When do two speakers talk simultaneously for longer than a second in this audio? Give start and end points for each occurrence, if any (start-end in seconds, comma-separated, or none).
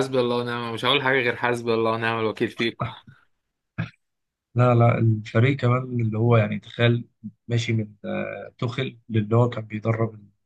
none